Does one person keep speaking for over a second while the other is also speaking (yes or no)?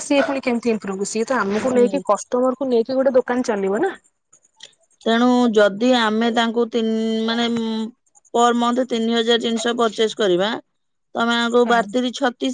no